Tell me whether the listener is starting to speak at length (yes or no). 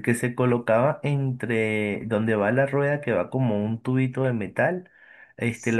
no